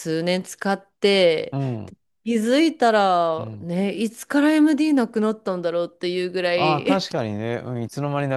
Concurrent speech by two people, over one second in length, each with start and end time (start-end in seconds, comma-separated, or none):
none